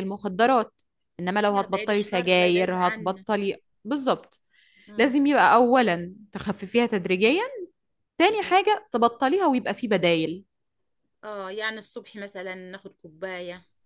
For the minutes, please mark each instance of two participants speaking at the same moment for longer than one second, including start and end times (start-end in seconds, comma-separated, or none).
1.5-3.2